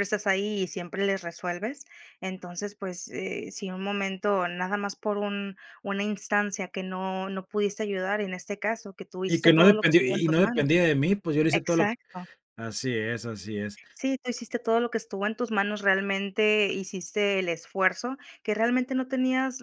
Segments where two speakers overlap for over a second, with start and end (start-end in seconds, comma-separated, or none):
9.3-10.7